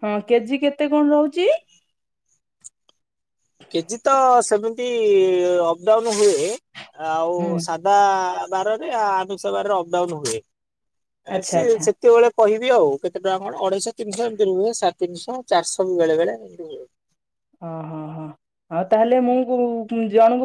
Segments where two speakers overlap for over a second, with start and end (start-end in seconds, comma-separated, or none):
none